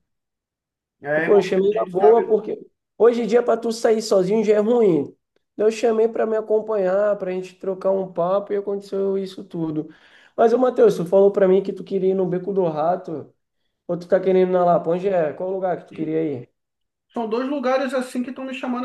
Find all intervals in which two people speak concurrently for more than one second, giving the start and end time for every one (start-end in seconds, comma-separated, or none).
1.2-2.4